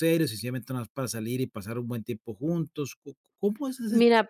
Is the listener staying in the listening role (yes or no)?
no